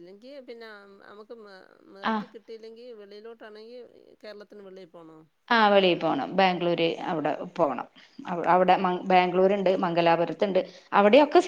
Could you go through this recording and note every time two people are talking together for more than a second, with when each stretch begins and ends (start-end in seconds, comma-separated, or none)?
none